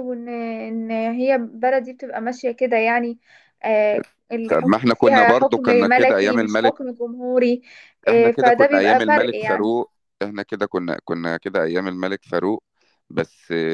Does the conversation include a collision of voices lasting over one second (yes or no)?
yes